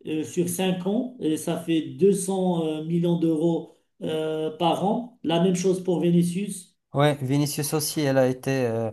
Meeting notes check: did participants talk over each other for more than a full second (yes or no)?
no